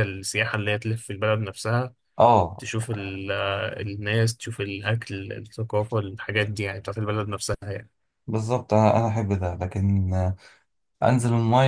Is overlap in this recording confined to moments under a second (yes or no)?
yes